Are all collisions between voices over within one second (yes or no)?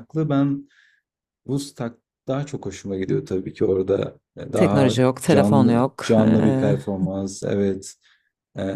no